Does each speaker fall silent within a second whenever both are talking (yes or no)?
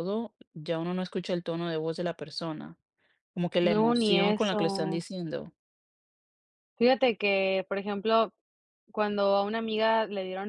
no